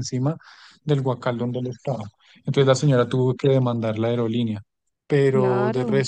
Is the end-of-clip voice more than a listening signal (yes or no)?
no